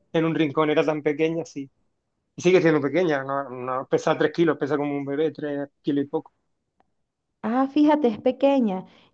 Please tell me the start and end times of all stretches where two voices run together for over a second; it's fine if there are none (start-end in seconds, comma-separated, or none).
none